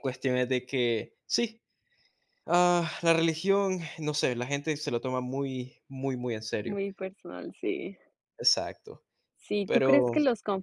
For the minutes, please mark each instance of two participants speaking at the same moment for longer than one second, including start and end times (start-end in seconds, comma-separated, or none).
none